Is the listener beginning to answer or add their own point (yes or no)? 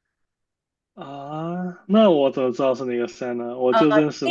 yes